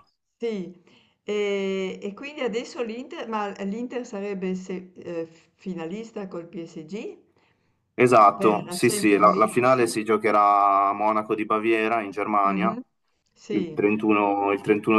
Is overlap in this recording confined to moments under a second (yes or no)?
no